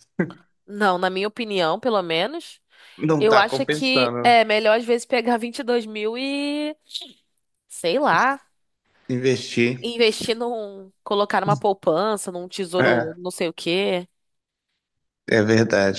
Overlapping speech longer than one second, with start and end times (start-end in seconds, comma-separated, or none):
3.2-4.4